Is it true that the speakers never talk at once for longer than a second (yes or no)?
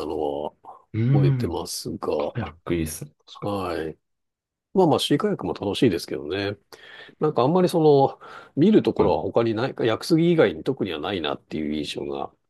yes